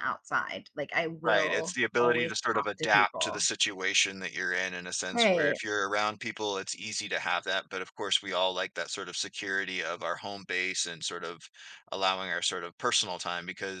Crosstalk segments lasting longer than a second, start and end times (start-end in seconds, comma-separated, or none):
1.2-3.4